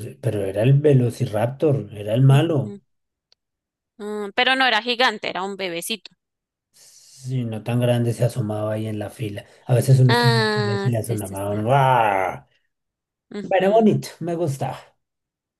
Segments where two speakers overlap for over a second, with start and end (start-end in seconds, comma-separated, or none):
10.1-11.6